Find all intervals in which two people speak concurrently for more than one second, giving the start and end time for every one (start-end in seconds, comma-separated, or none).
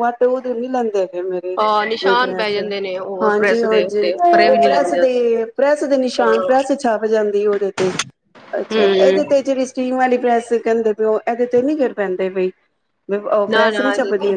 3.2-5.2